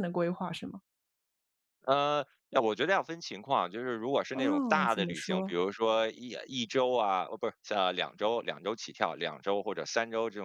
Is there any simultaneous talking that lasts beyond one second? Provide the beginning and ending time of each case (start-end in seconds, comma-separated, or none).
4.3-5.5